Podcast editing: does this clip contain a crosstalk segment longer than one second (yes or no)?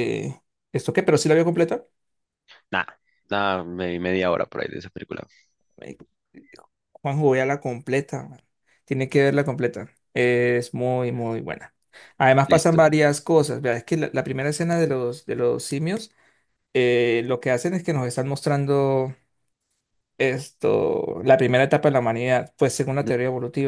no